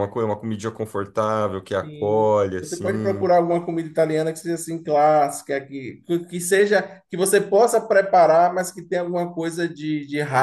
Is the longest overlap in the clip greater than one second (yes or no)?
yes